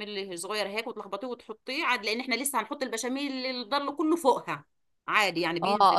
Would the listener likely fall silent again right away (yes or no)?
no